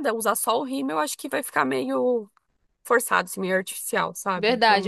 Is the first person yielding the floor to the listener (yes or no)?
yes